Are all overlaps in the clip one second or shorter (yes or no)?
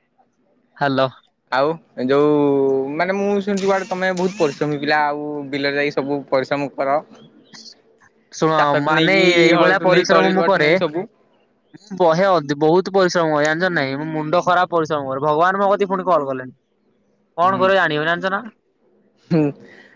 no